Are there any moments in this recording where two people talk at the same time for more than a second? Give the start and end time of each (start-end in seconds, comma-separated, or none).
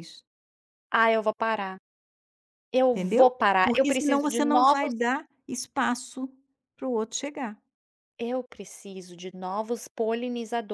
2.9-4.9